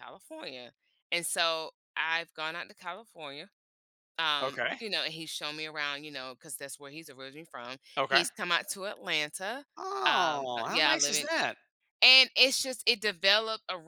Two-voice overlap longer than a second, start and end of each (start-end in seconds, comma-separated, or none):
10.1-11.3